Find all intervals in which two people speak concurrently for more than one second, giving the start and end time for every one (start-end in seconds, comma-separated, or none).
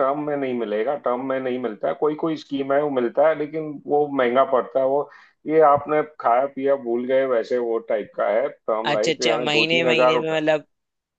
8.8-10.4